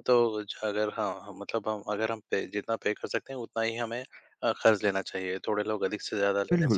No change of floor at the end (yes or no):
yes